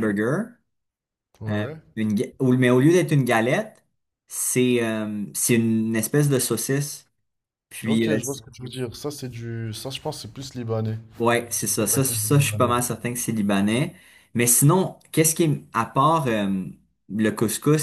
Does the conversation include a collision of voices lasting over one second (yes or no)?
yes